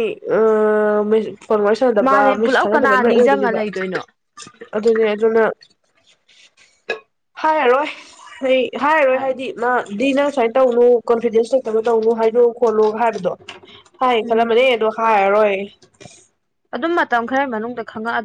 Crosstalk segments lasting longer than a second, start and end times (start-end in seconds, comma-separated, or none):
2.0-3.6